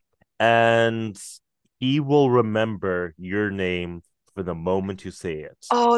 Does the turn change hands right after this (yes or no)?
yes